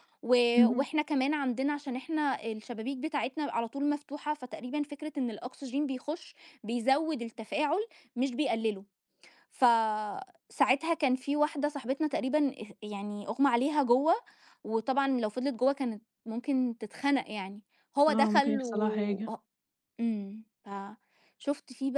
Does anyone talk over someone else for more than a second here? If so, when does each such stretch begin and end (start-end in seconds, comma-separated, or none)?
18.1-19.3